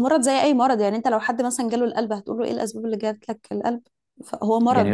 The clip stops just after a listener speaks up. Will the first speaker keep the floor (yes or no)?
yes